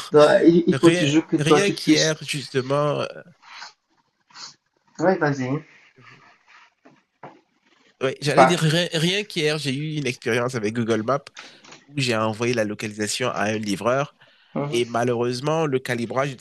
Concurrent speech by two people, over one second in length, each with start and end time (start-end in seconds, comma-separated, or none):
0.7-2.2